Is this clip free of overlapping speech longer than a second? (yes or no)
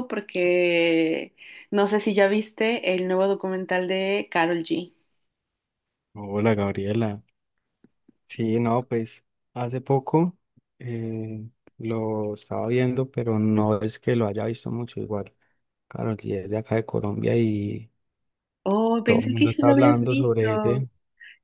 no